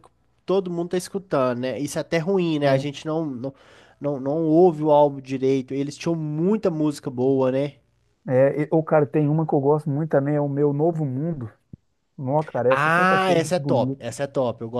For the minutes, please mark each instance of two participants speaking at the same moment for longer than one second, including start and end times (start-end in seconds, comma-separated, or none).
12.7-14.0